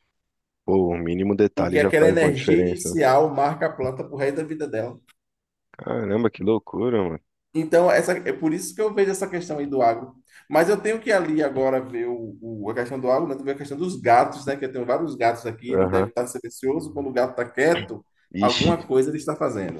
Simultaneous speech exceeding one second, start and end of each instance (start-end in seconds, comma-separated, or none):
1.6-3.0